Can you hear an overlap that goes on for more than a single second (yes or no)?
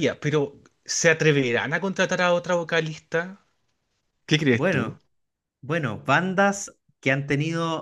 no